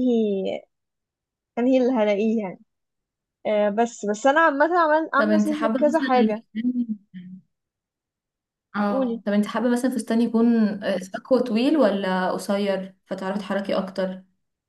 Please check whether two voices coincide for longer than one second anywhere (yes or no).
yes